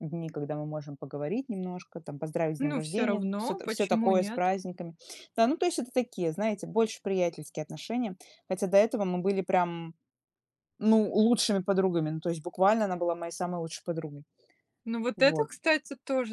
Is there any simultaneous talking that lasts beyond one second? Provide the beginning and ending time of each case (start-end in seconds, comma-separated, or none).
2.6-4.5